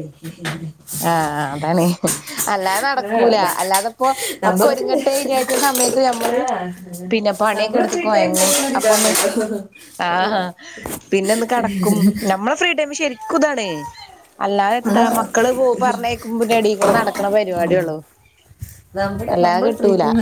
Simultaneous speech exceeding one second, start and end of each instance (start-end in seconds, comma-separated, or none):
7.5-9.1